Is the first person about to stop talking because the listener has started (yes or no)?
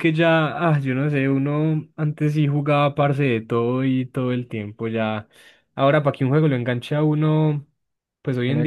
yes